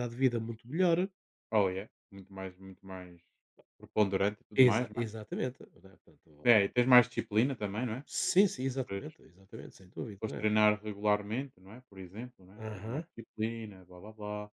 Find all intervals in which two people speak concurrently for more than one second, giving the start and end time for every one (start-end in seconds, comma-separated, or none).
none